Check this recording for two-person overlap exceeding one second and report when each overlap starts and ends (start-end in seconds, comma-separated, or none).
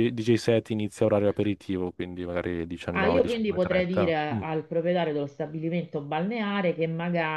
2.9-4.1